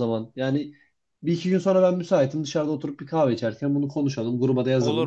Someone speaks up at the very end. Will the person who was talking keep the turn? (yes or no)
yes